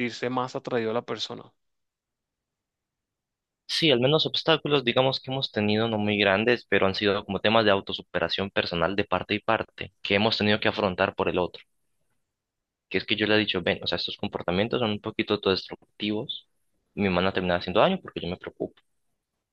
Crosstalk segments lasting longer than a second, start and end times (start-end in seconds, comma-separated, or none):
none